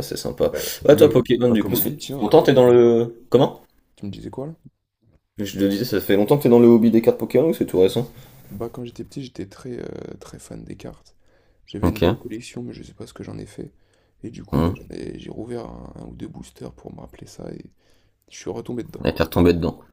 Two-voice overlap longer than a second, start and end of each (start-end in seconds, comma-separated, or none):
0.5-2.8